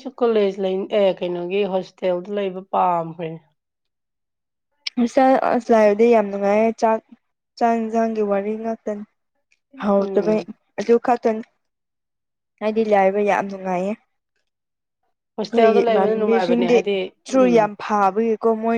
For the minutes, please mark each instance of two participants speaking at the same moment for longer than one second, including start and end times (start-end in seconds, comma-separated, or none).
15.5-16.8